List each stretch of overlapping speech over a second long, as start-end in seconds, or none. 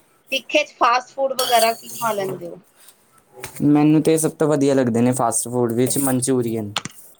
none